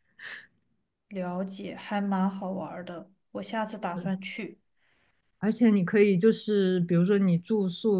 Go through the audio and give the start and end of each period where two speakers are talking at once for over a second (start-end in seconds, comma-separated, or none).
none